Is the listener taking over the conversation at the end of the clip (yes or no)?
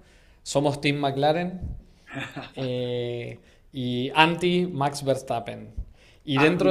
yes